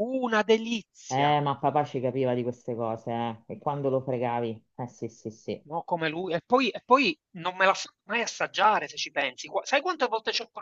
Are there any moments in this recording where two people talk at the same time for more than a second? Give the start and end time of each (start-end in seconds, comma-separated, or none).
none